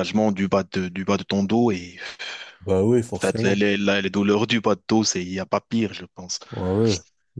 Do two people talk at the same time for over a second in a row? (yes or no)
no